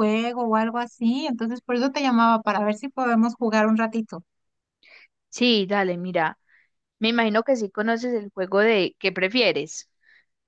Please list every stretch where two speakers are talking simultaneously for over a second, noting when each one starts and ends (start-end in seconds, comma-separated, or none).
none